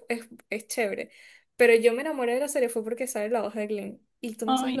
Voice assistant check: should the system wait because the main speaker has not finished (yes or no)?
yes